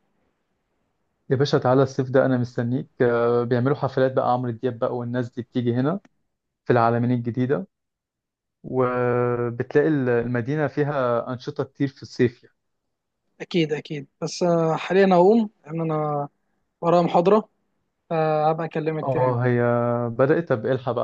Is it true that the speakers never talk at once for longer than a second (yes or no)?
yes